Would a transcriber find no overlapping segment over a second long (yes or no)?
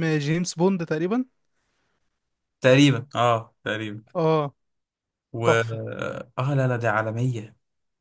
yes